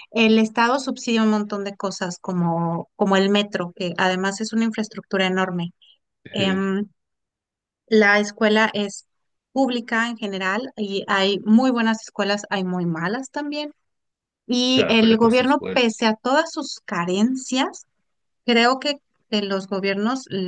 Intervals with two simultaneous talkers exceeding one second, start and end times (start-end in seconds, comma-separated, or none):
14.7-16.1